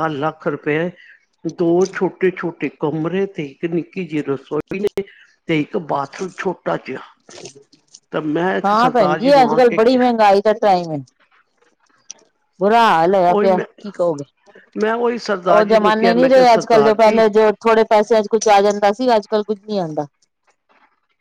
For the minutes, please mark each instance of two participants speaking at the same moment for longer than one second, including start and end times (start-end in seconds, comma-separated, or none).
15.5-17.2